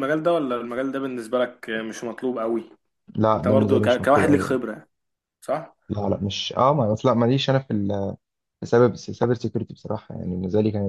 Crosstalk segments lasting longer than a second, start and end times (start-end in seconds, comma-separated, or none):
3.3-4.6